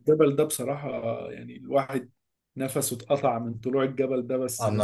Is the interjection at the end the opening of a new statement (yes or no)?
yes